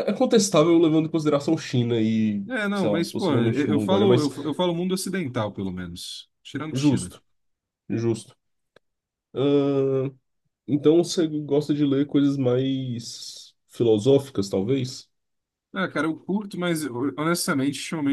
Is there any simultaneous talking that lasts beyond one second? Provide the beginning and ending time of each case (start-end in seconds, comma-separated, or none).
2.5-4.3